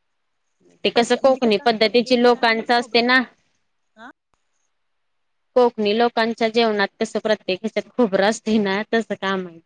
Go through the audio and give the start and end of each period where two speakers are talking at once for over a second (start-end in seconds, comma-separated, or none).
0.9-3.0